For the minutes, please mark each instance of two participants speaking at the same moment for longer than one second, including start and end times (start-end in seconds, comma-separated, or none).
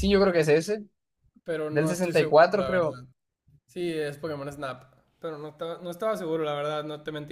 1.7-2.9